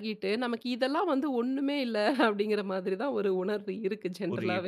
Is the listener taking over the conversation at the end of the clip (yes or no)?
yes